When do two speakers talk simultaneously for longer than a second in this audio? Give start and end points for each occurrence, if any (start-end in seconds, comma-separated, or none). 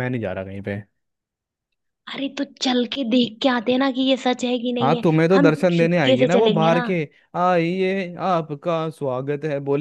4.8-6.8